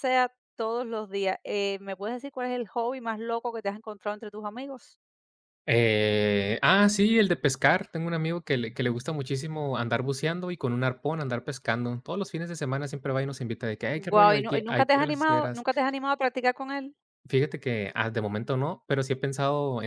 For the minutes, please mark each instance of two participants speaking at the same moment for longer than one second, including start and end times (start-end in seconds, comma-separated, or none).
14.1-15.7